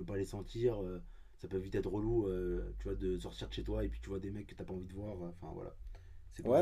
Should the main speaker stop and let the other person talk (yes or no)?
yes